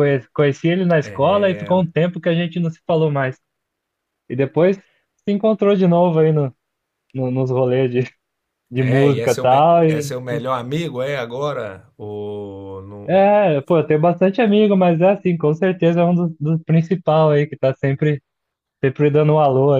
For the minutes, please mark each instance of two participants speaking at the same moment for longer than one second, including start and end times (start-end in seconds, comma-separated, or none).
8.7-10.4